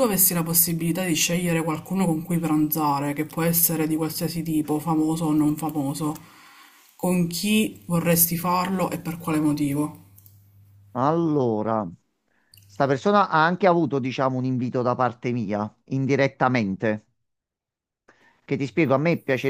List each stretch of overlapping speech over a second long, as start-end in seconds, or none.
none